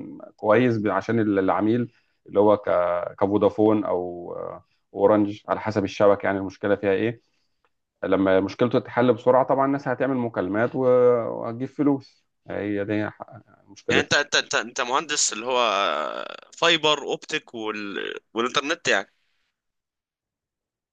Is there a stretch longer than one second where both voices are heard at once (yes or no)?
no